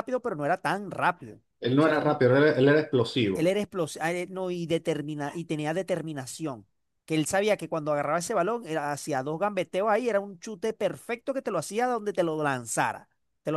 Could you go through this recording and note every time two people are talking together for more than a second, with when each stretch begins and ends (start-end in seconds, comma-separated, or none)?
none